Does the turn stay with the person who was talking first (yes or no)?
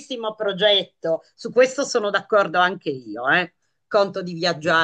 yes